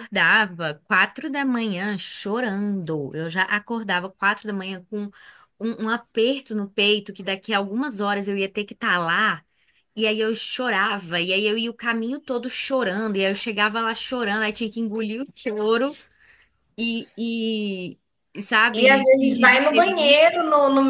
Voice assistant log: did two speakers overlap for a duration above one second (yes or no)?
yes